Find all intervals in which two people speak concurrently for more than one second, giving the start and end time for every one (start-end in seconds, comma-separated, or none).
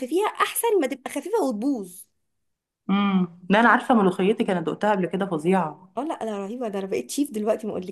none